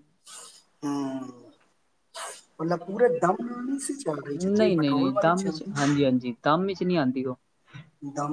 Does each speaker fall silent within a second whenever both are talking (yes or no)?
no